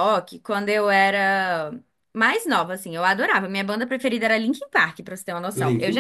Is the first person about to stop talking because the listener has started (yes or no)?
no